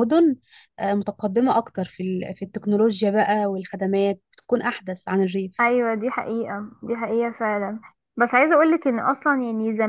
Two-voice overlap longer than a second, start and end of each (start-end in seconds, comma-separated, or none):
none